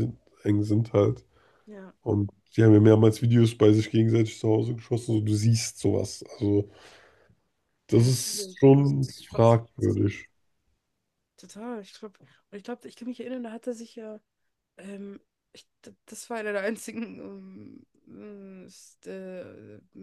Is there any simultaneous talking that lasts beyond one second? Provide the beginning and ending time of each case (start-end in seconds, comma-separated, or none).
7.9-9.6